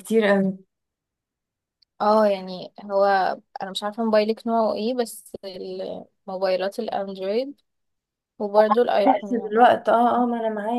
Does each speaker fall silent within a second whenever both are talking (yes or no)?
yes